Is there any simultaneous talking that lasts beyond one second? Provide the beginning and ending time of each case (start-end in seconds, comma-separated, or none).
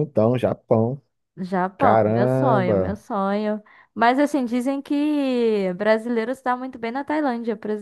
1.8-3.0